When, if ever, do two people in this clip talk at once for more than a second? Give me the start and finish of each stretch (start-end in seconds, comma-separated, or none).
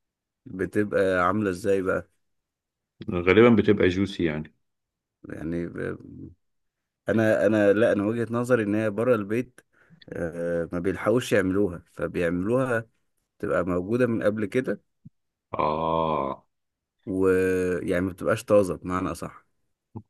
none